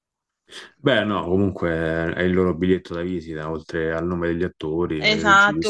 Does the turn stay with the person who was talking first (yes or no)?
no